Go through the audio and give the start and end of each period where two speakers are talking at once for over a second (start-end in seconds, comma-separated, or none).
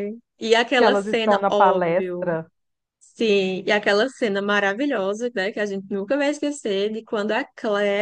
0.8-2.3